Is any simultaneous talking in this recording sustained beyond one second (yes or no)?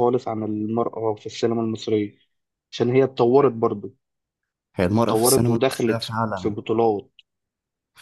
yes